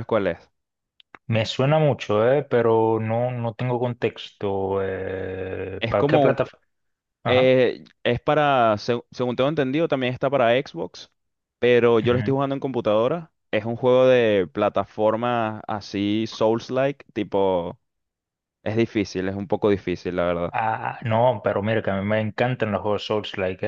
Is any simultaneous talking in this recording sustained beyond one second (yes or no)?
no